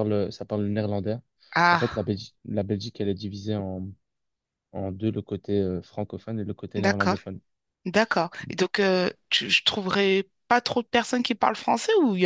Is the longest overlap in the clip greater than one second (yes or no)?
no